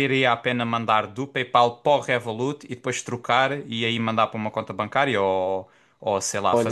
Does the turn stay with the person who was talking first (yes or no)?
no